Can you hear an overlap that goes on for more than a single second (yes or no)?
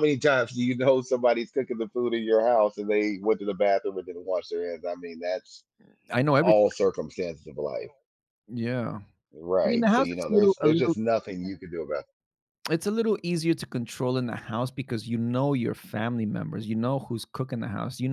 yes